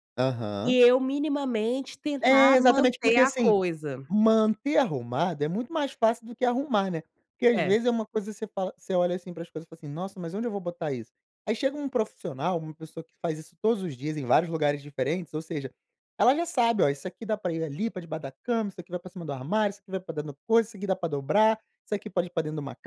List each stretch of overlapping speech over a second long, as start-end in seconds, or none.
2.2-3.5